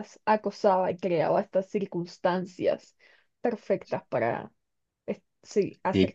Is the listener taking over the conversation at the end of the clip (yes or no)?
yes